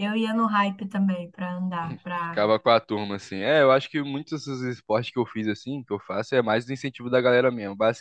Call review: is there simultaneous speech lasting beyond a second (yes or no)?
no